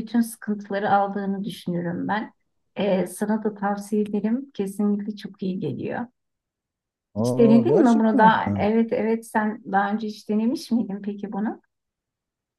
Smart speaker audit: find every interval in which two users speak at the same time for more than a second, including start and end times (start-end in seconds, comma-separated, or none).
7.2-8.7